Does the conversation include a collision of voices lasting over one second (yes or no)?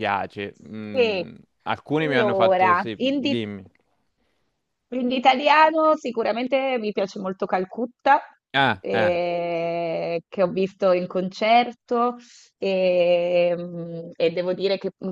yes